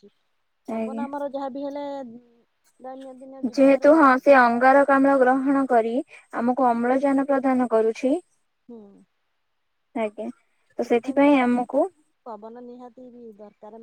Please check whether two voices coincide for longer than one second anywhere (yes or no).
no